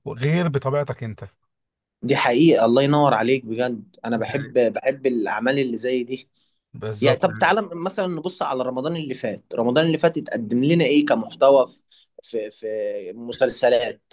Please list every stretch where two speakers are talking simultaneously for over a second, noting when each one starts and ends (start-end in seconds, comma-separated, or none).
none